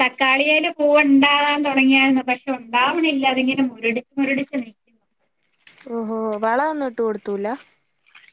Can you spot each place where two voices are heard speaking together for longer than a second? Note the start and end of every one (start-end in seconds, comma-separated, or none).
none